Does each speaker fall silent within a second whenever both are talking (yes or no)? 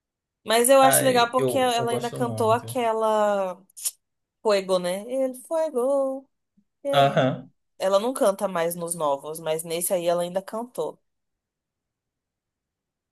no